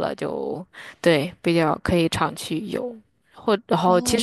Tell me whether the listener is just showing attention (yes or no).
yes